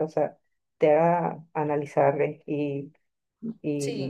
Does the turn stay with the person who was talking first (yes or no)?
yes